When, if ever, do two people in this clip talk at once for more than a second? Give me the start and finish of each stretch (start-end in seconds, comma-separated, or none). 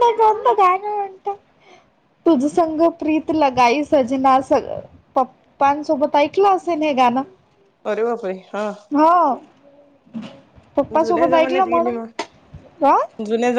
11.0-12.3